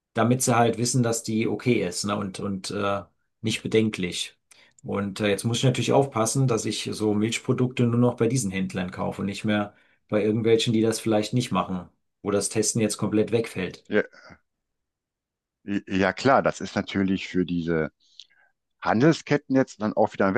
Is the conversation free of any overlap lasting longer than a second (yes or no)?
yes